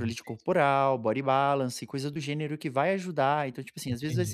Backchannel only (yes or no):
yes